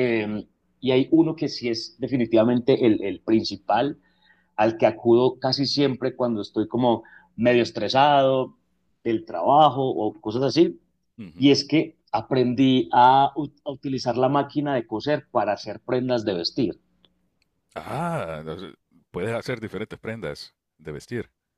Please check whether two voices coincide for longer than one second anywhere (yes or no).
no